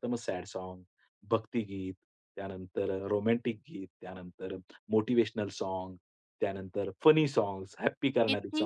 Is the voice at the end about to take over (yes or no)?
yes